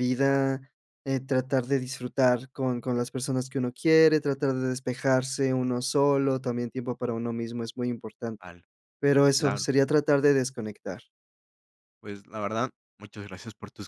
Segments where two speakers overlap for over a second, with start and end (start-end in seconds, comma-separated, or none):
none